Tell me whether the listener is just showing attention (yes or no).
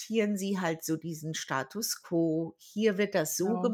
yes